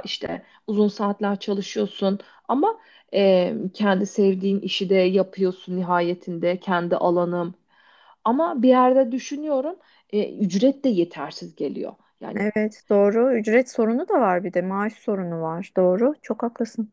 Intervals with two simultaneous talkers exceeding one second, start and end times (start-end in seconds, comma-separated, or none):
none